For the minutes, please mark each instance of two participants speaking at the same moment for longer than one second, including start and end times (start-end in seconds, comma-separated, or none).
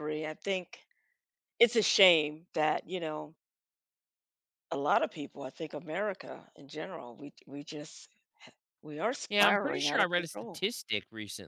9.3-10.7